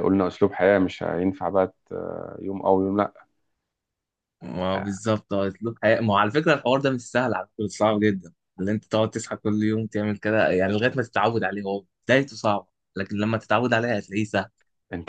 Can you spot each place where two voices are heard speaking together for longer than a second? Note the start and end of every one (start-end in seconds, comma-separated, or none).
none